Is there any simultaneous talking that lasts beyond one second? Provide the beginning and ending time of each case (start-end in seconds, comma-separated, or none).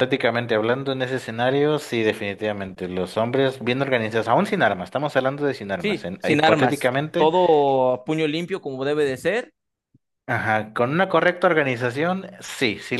5.8-7.3